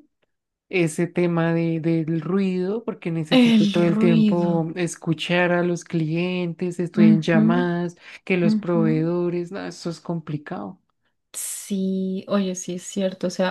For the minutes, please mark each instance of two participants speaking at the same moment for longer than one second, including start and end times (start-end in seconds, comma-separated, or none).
3.3-4.7